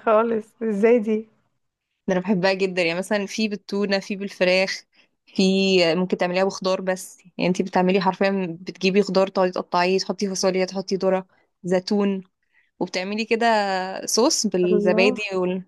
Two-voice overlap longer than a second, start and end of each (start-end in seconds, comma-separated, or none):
none